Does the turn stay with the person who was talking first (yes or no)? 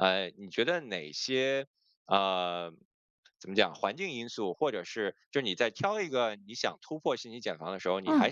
yes